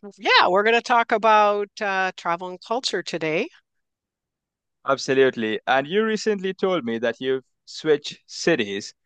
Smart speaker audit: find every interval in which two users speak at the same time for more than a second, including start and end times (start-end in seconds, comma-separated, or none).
none